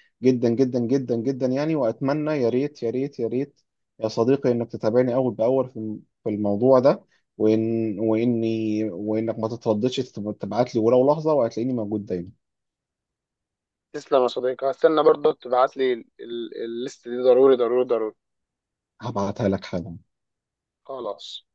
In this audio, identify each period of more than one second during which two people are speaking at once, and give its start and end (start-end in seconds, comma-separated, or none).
none